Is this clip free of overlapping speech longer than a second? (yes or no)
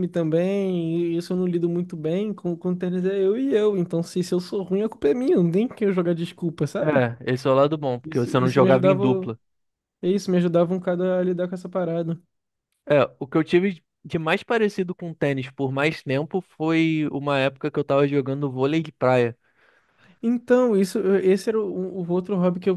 no